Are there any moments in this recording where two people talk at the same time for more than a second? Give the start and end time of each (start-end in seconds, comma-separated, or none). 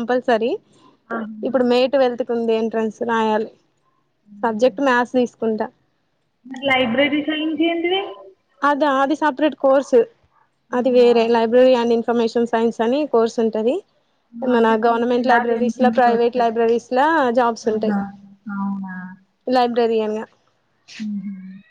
14.6-16.5